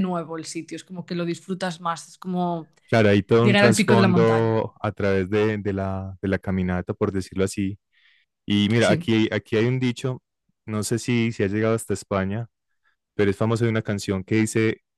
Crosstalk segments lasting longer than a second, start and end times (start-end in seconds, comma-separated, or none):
3.4-4.6